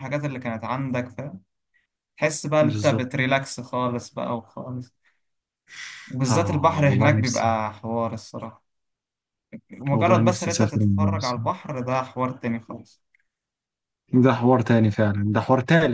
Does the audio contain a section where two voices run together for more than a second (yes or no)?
yes